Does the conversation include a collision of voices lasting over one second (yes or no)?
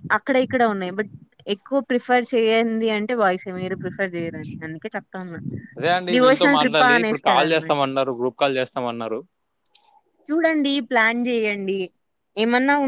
no